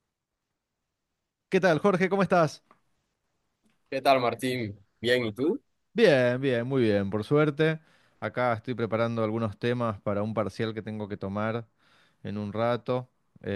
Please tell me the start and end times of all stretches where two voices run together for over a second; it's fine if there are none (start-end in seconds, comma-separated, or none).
none